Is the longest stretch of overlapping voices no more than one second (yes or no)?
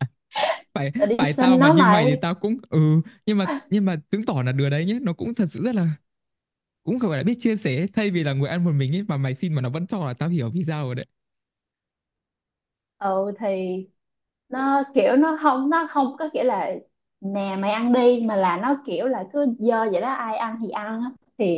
no